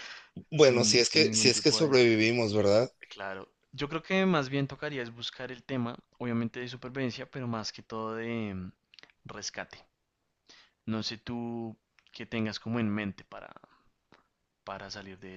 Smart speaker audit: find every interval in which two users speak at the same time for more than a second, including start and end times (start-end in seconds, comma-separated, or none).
0.5-2.0